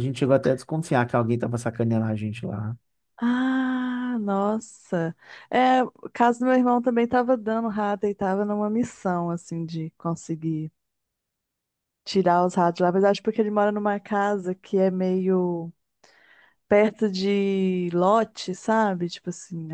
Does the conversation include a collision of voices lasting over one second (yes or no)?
no